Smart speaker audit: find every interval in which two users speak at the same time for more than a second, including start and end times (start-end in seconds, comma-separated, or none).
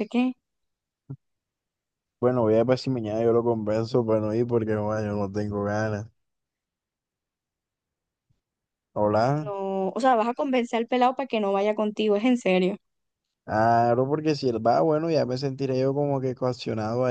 none